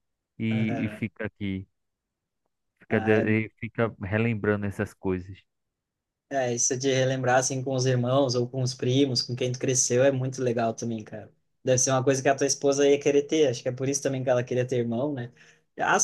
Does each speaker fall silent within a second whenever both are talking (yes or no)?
yes